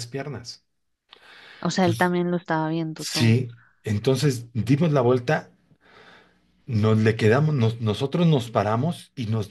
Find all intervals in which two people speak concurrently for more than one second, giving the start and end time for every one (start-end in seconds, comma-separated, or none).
none